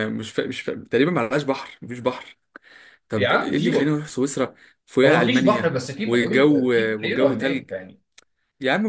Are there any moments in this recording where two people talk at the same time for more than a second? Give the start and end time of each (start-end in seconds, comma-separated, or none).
5.0-7.7